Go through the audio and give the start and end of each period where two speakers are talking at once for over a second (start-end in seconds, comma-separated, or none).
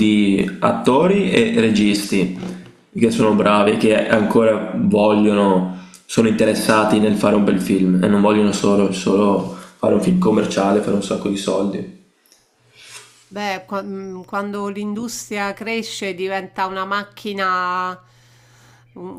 none